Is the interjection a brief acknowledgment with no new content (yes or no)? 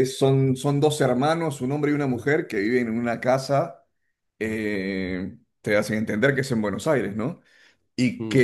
yes